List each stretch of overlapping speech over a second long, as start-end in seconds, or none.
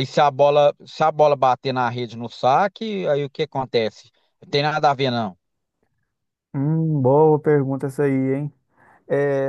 none